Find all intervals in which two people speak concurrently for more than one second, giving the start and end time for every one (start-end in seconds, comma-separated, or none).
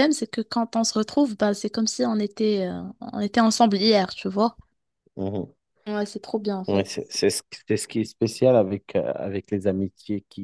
none